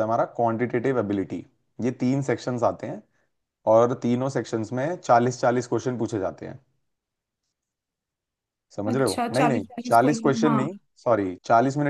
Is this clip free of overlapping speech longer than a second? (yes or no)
no